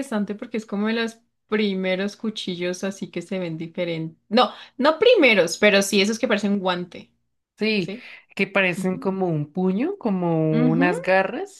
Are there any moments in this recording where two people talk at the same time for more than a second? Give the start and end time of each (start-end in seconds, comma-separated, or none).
none